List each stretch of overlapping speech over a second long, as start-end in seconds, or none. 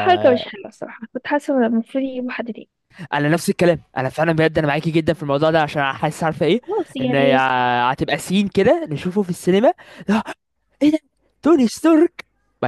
none